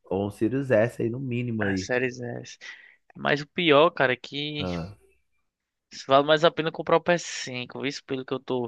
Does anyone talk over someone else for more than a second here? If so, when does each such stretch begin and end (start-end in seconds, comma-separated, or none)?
none